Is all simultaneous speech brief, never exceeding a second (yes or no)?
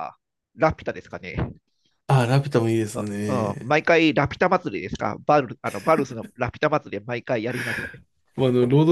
yes